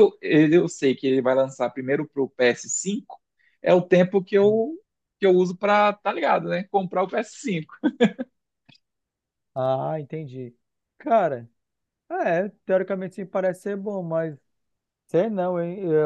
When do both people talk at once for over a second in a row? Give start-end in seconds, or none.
none